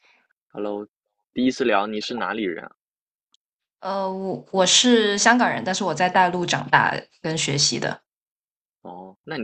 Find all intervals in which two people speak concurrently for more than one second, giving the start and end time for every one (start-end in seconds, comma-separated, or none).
none